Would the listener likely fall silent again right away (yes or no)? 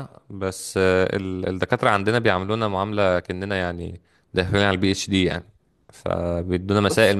yes